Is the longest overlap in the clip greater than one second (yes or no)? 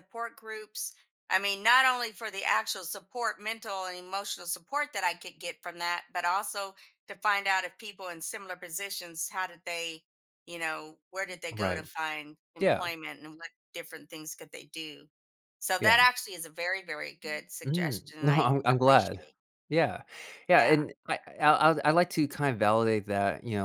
yes